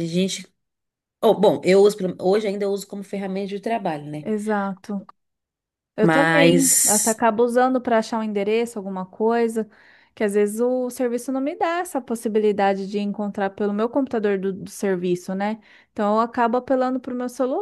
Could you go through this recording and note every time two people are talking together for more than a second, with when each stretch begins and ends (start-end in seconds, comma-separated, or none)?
6.0-7.2